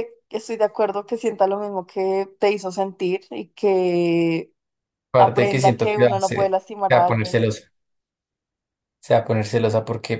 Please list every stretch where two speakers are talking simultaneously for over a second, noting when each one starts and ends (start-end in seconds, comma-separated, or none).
5.2-7.4